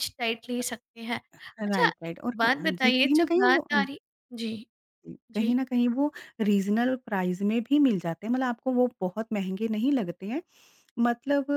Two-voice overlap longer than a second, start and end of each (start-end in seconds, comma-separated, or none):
1.7-3.8